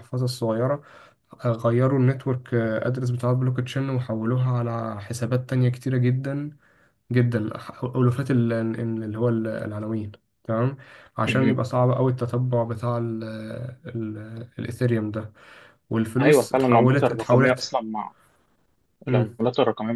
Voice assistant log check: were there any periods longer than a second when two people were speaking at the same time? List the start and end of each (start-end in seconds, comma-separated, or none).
16.2-17.7